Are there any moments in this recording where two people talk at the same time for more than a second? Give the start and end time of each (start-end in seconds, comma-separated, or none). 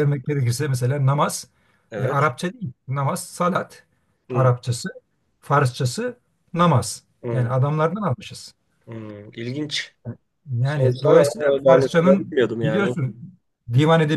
10.6-13.0